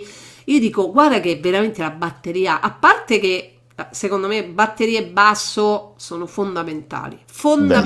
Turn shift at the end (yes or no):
no